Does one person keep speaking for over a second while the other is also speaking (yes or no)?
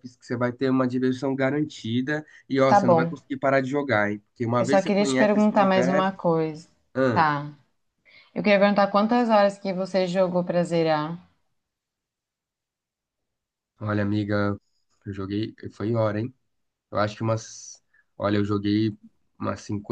yes